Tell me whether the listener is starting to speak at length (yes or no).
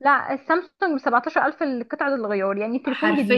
yes